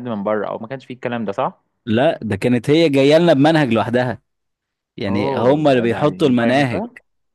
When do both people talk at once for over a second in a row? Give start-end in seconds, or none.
5.1-6.8